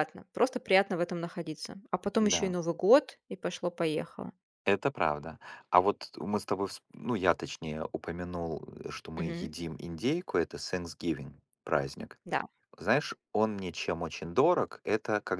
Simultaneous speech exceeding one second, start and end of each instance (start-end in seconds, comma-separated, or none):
none